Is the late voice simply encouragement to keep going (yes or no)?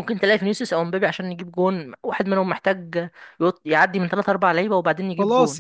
no